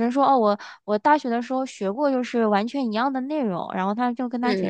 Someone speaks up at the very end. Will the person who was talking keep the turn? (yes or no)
yes